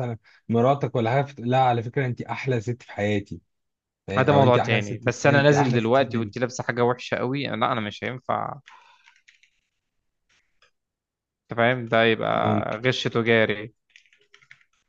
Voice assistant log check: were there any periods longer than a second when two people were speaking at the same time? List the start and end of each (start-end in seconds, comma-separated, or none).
4.2-6.3